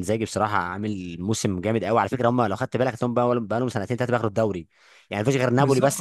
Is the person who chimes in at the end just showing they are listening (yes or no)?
yes